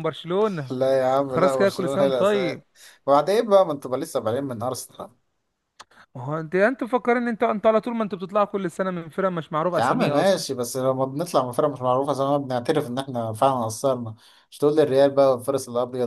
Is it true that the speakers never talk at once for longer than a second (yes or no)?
no